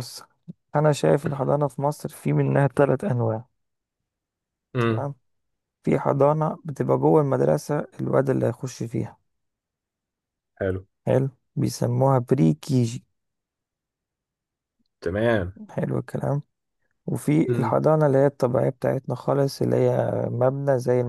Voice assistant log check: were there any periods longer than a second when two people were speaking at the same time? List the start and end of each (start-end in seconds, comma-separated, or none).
none